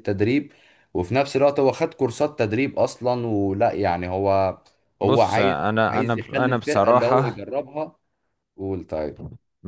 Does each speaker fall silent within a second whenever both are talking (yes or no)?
no